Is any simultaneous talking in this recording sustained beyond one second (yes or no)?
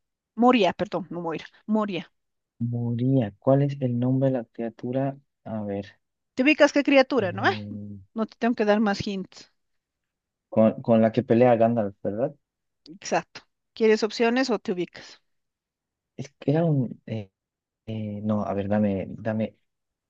no